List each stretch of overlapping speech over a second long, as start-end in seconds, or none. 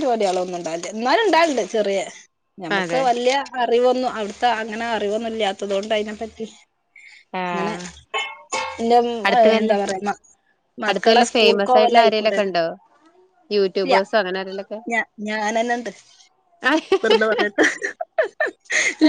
10.9-12.5